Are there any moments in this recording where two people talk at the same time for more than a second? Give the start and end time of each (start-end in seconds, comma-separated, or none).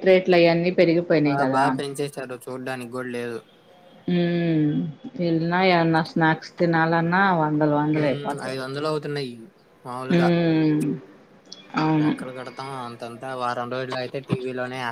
none